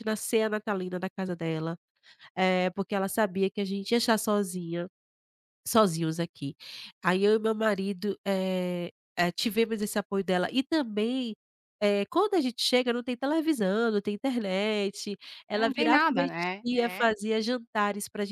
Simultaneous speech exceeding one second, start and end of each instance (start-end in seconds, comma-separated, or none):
15.5-17.1